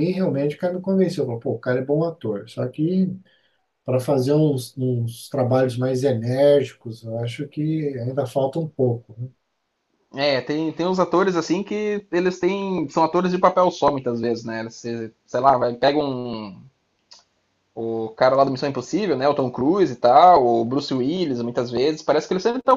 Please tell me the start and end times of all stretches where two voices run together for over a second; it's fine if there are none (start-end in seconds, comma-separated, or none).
none